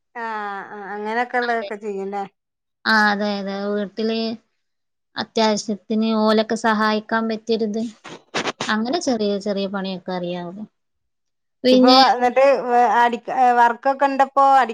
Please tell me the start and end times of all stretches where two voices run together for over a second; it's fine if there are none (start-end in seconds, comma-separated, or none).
none